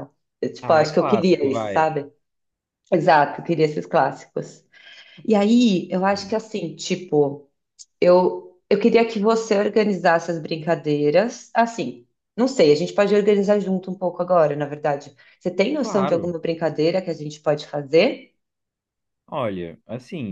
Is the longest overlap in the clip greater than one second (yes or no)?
yes